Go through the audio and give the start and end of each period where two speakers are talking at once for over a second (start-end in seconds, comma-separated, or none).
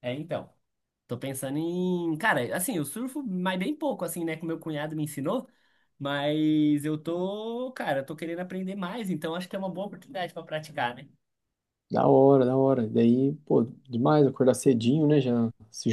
none